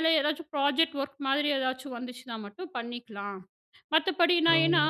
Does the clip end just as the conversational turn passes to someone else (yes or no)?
no